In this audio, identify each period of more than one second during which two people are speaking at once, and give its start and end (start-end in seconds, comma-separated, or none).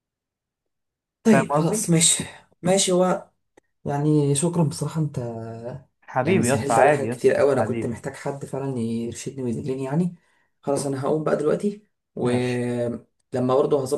6.2-8.0